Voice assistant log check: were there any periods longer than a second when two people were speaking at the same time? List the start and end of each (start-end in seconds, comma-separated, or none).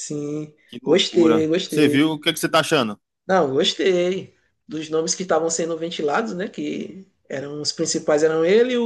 0.7-2.1